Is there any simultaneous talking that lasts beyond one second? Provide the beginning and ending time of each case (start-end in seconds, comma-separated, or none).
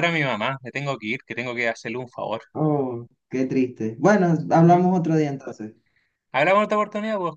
none